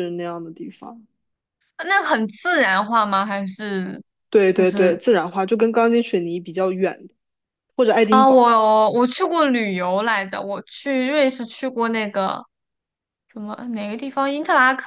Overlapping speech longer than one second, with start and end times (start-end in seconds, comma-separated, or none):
none